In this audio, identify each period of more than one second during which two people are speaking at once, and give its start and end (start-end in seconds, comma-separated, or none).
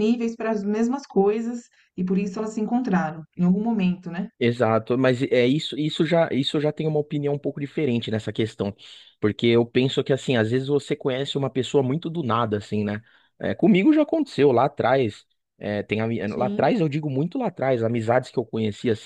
none